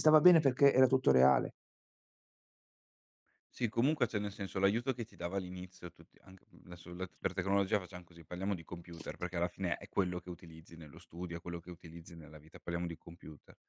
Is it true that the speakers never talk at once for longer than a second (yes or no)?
yes